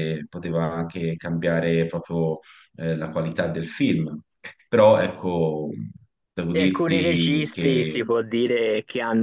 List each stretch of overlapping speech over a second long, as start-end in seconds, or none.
6.5-7.9